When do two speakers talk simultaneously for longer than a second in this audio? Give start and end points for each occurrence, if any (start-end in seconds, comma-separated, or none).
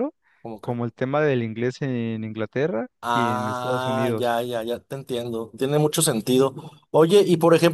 3.0-4.4